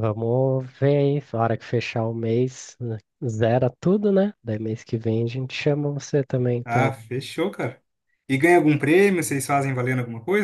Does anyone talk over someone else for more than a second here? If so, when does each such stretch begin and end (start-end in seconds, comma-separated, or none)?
none